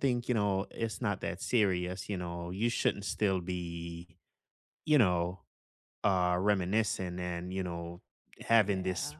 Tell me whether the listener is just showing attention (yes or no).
yes